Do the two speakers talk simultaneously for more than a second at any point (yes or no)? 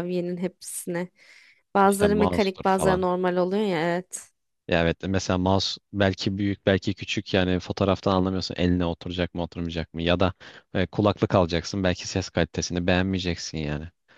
yes